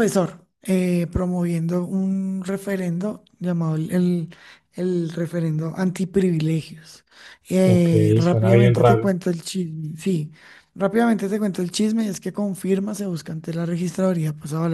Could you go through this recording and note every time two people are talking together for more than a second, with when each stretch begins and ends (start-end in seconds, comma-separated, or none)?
7.7-9.2